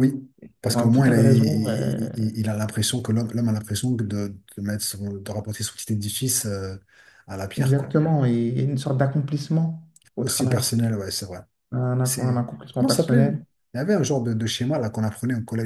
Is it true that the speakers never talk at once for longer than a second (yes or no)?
no